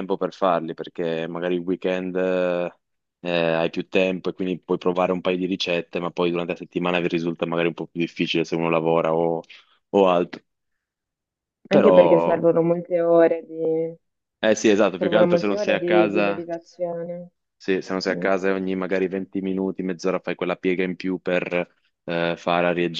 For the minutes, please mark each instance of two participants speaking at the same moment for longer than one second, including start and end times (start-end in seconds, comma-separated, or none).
15.0-16.5